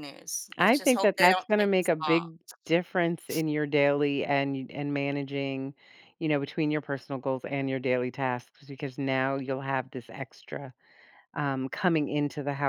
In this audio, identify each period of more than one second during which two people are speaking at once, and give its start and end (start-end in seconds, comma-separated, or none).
0.6-2.2